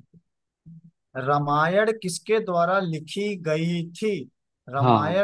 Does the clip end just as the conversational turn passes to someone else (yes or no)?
no